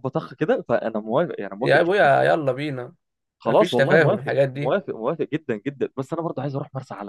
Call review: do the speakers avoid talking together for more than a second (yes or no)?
no